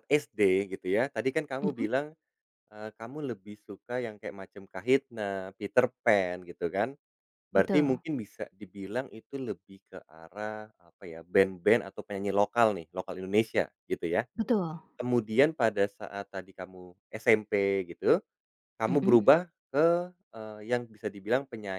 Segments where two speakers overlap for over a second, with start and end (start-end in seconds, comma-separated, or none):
none